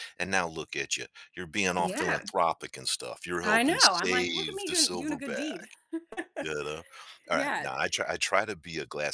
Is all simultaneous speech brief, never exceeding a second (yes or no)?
no